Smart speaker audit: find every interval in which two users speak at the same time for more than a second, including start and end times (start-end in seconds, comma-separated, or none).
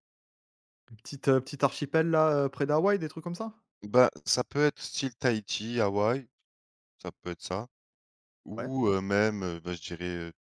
none